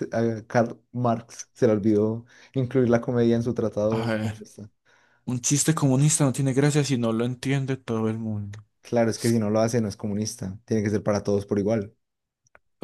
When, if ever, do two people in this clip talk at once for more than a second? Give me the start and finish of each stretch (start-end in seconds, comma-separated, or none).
none